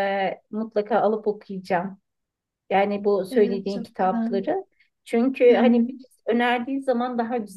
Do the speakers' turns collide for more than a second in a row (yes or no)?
yes